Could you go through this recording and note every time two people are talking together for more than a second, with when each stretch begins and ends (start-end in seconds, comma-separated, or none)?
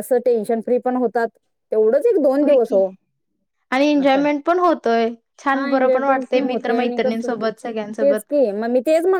5.5-7.3